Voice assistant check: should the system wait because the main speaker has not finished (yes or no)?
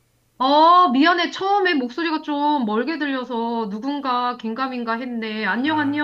no